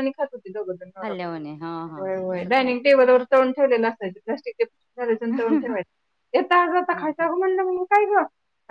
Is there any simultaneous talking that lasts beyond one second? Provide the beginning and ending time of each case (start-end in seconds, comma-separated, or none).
1.0-2.9